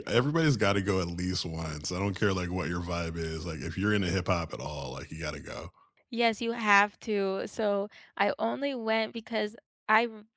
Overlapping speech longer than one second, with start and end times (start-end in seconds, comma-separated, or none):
none